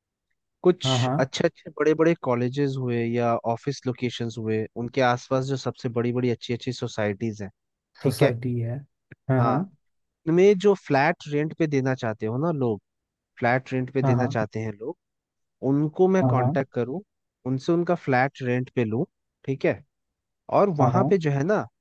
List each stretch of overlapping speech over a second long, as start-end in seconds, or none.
none